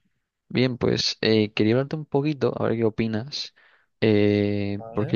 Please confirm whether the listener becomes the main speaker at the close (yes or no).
no